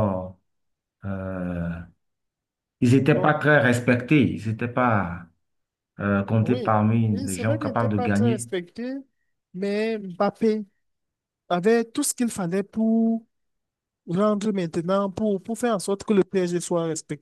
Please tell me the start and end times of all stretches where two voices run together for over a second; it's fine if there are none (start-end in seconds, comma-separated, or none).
6.4-8.5